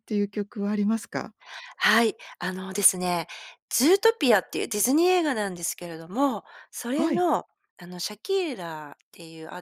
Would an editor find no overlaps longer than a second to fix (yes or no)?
yes